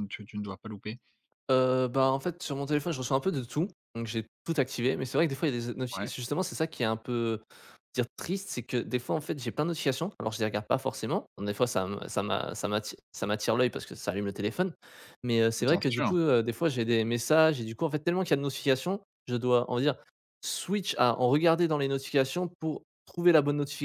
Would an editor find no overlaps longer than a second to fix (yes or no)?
yes